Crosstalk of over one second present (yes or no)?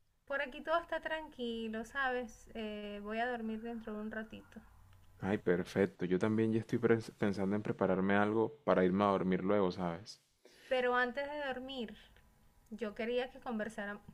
no